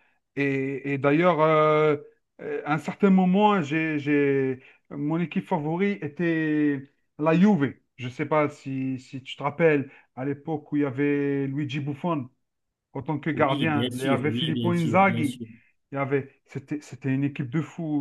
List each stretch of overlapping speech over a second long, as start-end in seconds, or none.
13.3-15.4